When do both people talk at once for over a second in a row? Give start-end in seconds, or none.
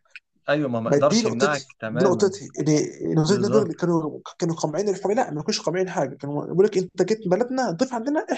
0.8-2.3